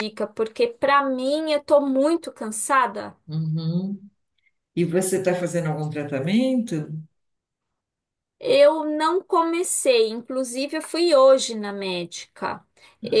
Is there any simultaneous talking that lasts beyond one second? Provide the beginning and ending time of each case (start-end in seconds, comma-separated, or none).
none